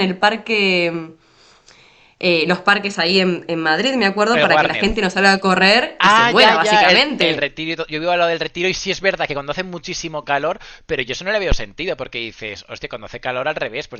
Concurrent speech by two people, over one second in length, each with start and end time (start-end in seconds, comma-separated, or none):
6.0-7.5